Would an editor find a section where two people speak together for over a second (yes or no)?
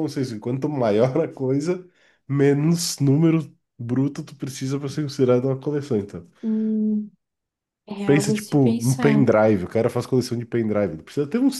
yes